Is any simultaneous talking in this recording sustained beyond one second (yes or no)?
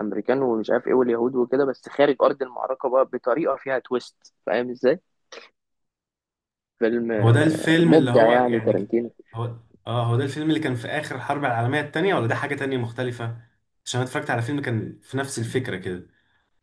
yes